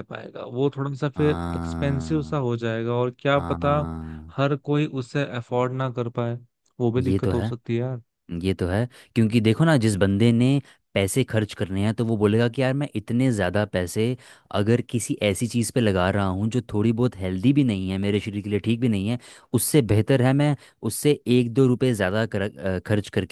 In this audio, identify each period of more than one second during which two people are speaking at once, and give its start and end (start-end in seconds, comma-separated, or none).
1.1-2.4